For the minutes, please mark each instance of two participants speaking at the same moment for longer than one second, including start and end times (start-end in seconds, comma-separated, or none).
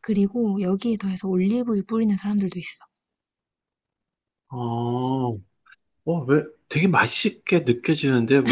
none